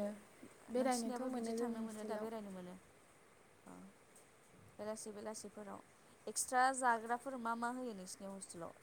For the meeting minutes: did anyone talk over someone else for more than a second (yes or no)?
yes